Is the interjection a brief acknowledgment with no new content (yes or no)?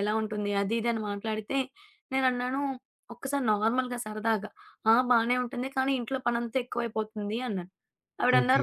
yes